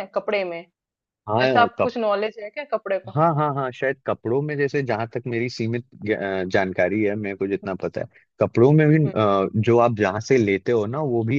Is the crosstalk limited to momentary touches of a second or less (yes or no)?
yes